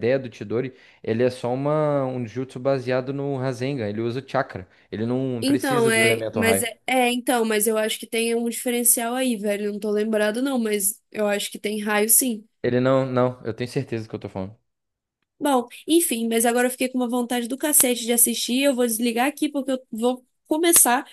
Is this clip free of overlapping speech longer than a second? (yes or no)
no